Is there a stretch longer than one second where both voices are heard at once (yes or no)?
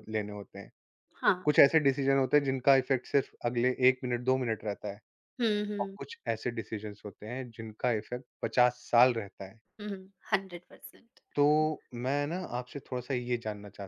no